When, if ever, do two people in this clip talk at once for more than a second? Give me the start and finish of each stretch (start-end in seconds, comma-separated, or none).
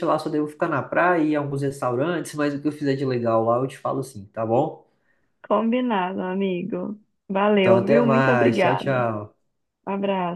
7.6-9.1